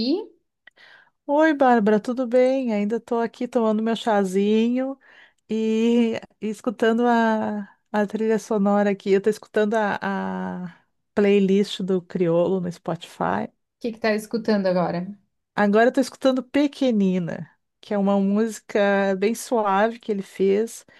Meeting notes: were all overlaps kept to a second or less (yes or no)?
yes